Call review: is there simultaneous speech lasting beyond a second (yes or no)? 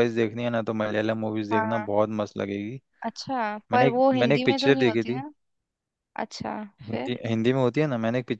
yes